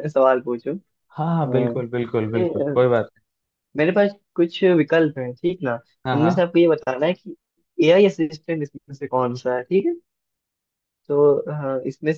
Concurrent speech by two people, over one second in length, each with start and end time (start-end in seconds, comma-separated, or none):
1.3-2.8